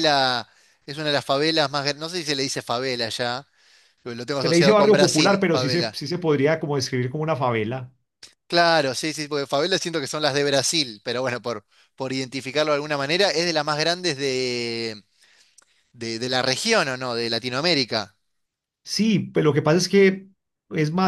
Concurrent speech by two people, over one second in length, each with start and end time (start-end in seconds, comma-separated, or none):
4.4-6.0